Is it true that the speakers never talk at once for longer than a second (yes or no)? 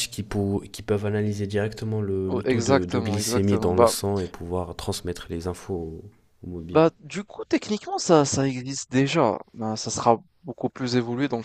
no